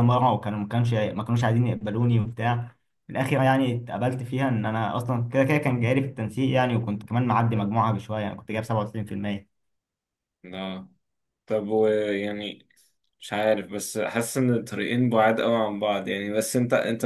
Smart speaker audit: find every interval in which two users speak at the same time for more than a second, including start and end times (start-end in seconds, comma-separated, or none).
none